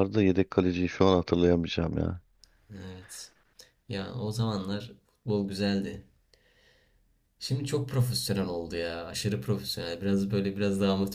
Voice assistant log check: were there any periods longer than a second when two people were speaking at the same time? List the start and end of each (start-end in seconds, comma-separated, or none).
none